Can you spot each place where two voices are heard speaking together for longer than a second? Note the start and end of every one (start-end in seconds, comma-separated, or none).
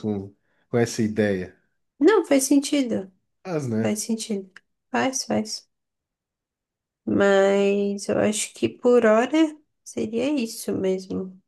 none